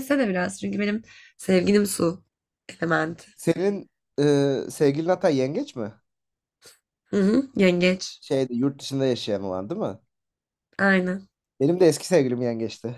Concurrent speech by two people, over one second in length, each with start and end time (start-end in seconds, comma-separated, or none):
none